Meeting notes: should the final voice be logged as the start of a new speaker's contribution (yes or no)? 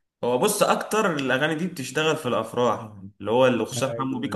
no